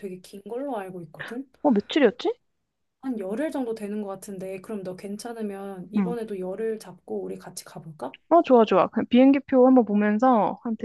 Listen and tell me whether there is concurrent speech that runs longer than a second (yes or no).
no